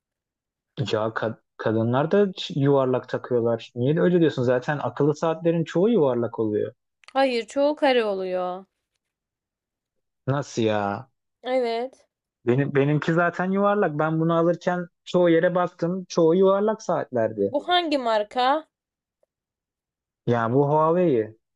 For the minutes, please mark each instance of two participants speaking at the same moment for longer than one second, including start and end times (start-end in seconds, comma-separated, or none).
none